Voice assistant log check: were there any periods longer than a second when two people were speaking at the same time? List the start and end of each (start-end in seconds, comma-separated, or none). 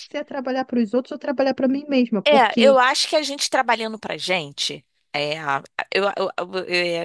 none